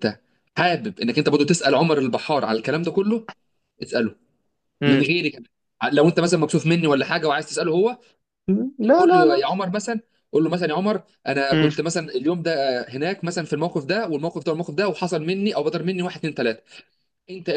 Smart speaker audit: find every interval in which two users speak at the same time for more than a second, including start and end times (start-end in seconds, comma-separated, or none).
none